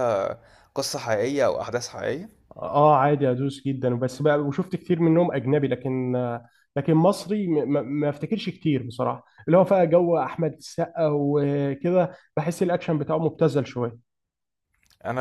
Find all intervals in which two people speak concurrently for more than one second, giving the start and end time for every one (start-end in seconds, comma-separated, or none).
none